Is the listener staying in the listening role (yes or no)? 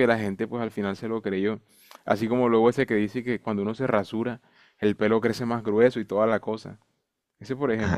no